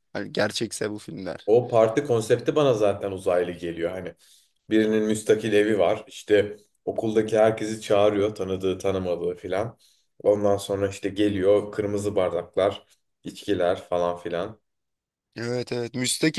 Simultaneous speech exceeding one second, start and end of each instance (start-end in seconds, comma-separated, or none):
none